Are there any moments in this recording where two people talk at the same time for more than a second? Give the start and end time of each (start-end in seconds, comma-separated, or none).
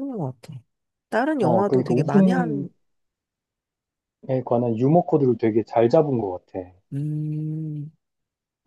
1.4-2.6